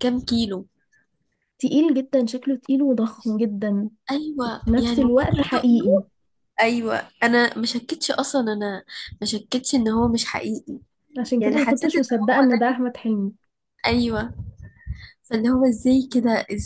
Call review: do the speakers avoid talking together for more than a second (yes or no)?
no